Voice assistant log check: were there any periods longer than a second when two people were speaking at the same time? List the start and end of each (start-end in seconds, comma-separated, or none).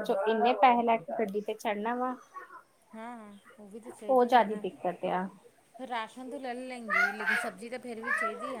none